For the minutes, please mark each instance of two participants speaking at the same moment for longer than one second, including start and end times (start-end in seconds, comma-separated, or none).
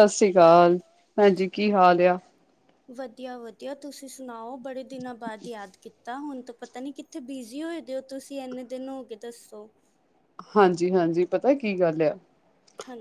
none